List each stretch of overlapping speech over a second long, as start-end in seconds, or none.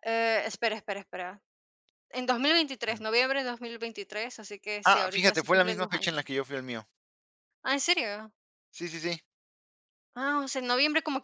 4.8-6.2